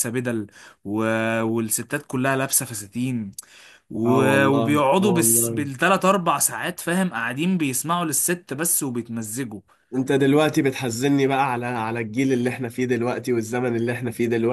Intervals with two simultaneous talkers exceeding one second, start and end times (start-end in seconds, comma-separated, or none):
4.0-5.7